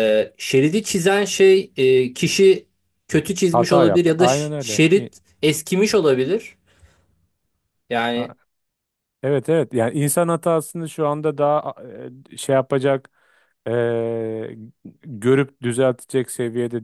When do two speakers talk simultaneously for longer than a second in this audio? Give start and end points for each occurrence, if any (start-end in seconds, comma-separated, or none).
3.5-5.1